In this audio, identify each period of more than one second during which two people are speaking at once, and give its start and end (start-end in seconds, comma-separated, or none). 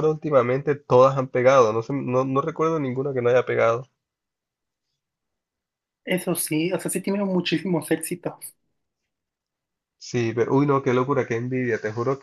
none